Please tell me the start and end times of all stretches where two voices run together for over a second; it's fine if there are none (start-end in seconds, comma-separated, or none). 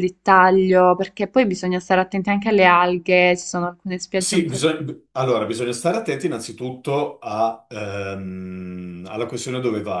none